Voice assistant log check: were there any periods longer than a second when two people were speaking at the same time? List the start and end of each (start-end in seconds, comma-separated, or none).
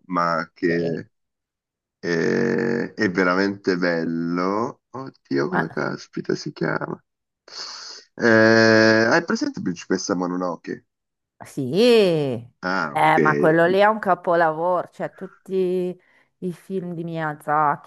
none